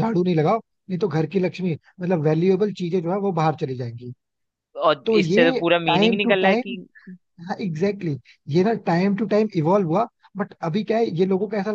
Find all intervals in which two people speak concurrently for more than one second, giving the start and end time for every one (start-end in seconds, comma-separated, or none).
5.0-6.8